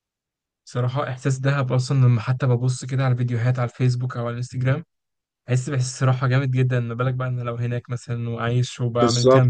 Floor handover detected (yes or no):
yes